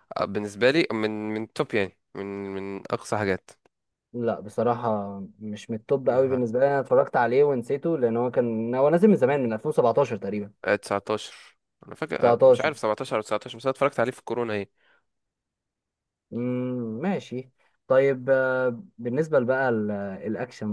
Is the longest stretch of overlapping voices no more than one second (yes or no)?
yes